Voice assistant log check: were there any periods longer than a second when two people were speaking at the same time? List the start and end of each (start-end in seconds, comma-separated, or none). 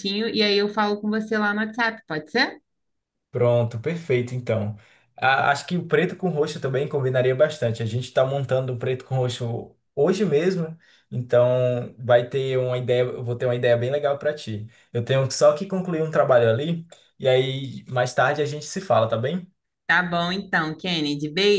none